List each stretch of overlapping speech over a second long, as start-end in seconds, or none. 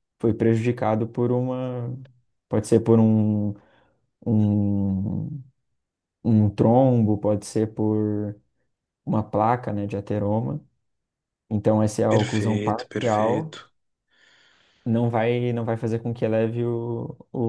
12.1-13.5